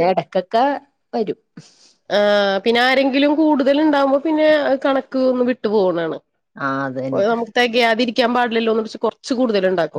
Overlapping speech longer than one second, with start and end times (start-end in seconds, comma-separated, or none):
none